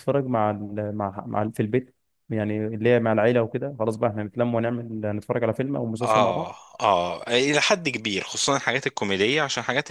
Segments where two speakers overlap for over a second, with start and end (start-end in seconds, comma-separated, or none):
none